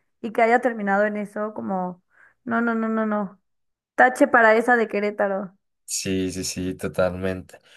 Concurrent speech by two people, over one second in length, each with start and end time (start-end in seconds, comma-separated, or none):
none